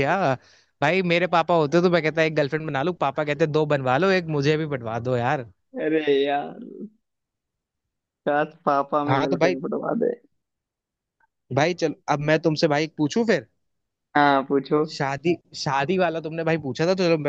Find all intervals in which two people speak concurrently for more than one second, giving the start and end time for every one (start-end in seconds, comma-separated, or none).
none